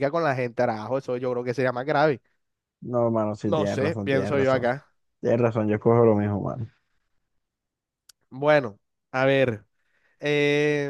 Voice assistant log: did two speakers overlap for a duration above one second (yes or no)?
yes